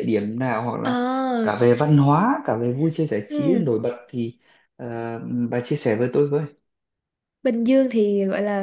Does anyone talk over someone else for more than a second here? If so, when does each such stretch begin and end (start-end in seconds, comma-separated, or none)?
none